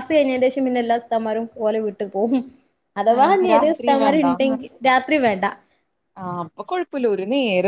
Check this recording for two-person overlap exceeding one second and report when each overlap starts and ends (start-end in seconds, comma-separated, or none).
none